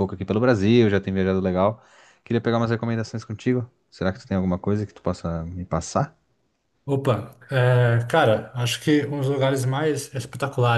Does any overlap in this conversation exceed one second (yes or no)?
no